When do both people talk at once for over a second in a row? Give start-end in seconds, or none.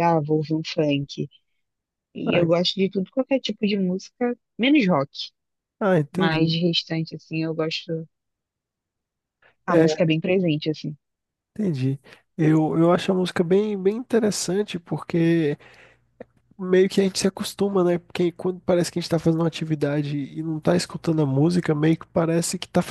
none